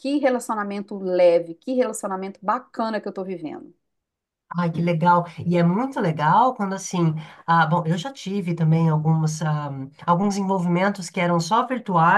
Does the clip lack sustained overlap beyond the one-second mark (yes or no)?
yes